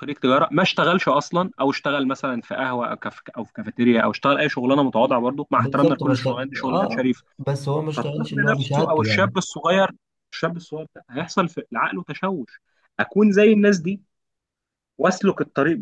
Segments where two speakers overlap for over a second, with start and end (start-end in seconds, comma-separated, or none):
5.5-7.1, 8.0-9.3